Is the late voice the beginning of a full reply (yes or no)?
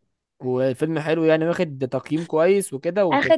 yes